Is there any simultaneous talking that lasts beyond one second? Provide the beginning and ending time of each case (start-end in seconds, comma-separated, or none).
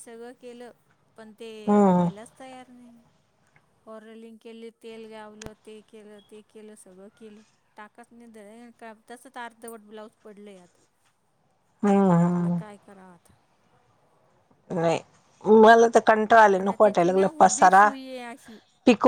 16.6-17.9